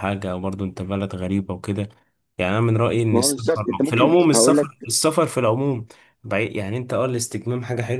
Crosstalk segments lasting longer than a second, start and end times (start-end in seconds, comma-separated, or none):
3.1-4.7